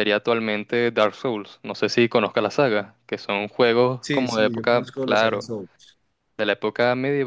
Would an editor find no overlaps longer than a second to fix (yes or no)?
no